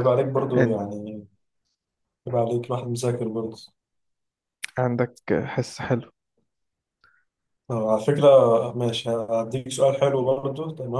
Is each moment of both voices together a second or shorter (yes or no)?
yes